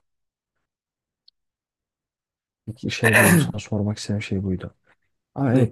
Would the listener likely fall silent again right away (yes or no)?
yes